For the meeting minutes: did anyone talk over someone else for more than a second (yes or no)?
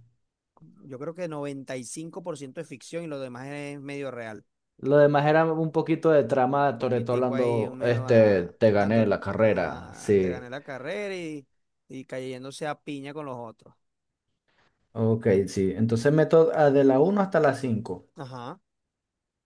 yes